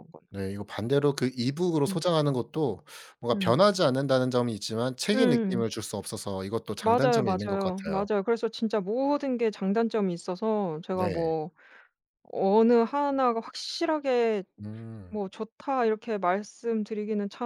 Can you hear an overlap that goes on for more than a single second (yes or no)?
yes